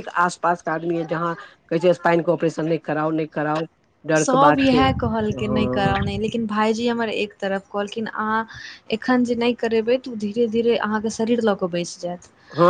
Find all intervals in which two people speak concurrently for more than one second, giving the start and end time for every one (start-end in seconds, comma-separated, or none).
4.2-5.9